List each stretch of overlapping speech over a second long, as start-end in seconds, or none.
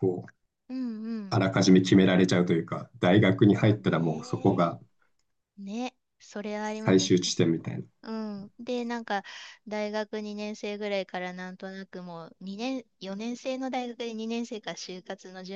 3.5-4.8